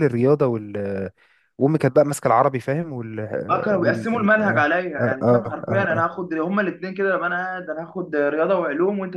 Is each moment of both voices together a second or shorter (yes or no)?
no